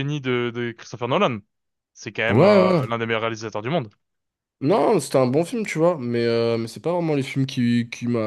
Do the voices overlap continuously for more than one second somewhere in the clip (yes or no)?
no